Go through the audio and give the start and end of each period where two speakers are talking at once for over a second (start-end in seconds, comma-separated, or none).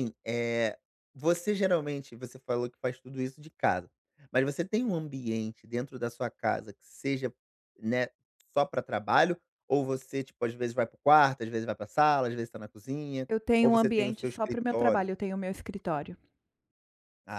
13.3-15.1